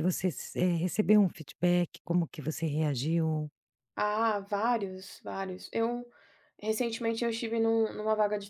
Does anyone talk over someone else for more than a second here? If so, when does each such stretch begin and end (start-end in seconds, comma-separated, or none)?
none